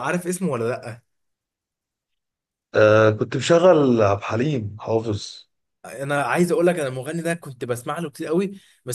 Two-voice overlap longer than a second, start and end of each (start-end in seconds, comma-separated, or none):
none